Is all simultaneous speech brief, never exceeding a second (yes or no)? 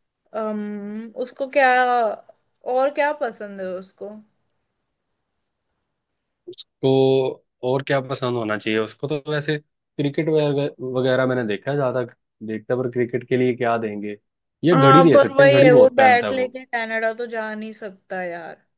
no